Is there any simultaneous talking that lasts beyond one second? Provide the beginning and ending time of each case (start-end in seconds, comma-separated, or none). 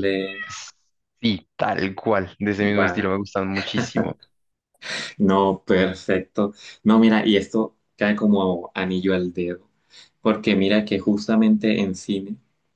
none